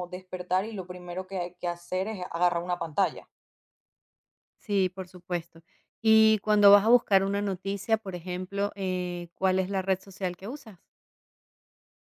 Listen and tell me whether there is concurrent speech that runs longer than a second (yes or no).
no